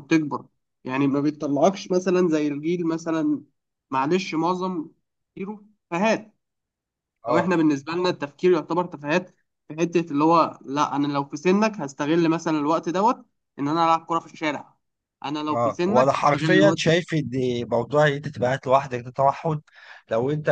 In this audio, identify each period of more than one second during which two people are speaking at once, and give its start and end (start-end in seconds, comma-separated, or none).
15.5-16.8